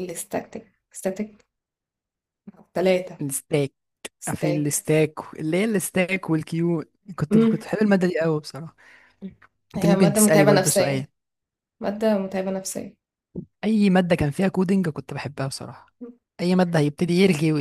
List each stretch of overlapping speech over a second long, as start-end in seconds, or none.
9.8-11.1